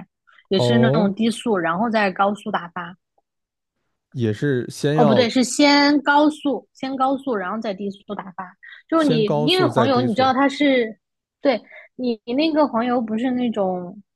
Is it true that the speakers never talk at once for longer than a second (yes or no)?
no